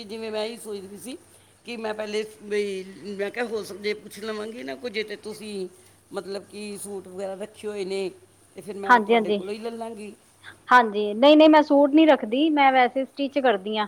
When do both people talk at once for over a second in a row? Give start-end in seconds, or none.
none